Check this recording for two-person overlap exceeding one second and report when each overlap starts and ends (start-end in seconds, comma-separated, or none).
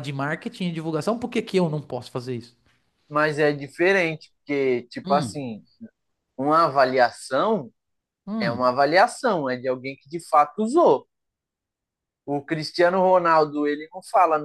none